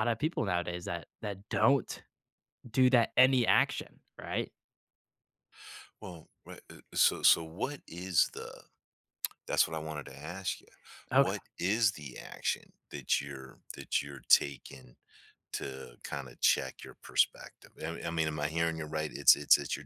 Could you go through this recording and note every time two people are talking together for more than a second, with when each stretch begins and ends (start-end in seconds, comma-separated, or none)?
none